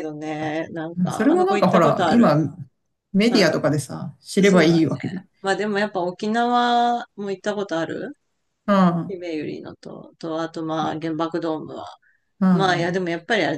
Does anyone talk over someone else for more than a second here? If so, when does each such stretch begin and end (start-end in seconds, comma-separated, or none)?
1.0-2.4